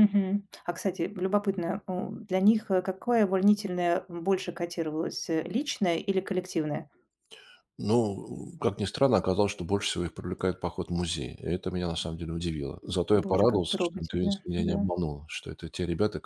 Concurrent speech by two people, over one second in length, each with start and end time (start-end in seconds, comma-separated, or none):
13.2-14.9